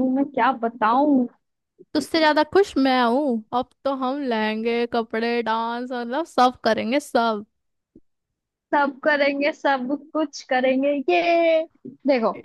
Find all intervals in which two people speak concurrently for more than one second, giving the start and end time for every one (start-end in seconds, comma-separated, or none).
none